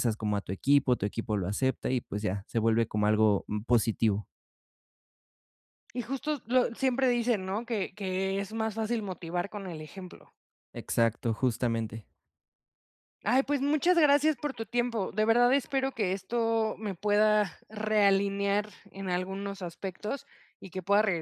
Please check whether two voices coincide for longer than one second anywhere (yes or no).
no